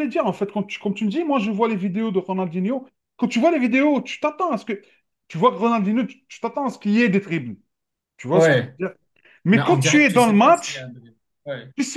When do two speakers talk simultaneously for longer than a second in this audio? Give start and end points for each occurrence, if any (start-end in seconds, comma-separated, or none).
9.5-10.9